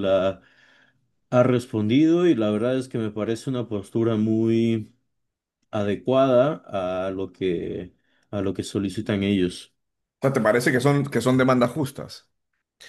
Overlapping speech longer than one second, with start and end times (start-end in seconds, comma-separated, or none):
none